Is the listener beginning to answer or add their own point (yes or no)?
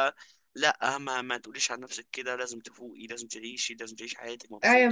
yes